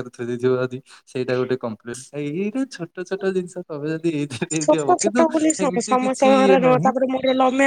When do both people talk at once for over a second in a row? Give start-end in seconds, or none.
4.6-6.9